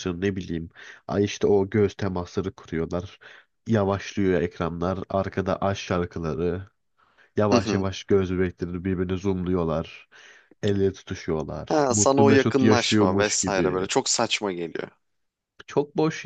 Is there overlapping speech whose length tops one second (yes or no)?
yes